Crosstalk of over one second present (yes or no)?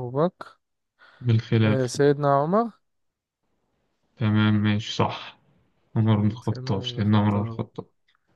yes